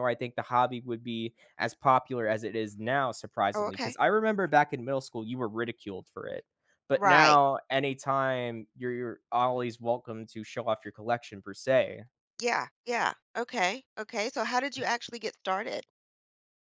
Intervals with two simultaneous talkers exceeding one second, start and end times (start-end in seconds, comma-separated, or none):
none